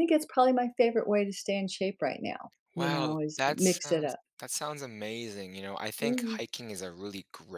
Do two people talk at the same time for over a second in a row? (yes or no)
yes